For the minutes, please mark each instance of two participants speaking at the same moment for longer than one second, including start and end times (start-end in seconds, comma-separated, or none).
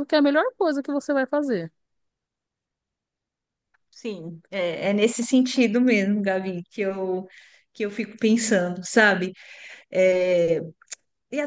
none